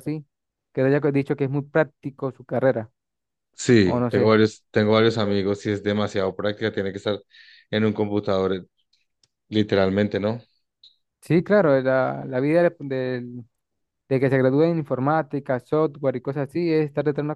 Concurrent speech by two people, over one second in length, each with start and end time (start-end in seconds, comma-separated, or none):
none